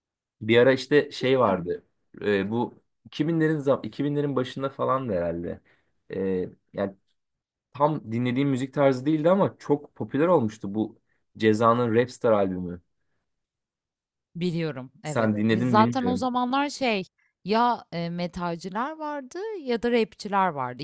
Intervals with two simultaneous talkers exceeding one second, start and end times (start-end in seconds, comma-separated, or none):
15.0-16.3